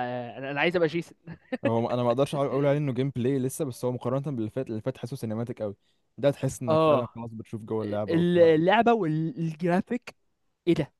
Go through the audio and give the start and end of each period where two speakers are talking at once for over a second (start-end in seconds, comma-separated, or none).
none